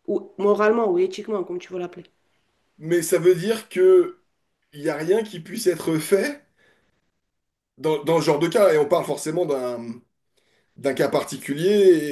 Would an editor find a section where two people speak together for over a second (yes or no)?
no